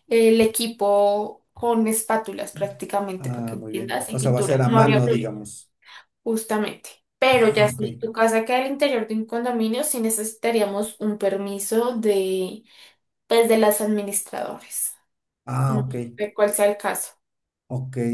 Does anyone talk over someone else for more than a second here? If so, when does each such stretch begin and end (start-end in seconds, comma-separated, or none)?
3.2-5.3